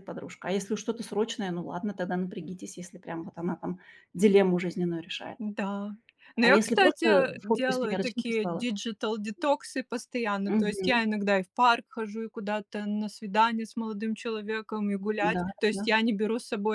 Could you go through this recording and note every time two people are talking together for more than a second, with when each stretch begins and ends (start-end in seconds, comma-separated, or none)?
6.4-8.7